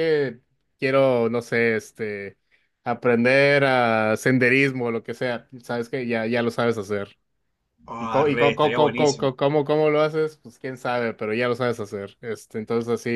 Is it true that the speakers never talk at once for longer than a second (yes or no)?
no